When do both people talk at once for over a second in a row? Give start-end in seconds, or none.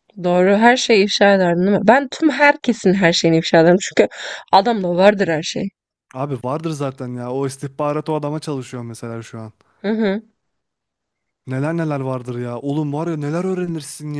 none